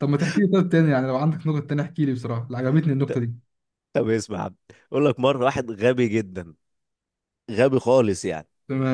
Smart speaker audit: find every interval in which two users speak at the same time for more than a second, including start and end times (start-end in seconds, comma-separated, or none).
none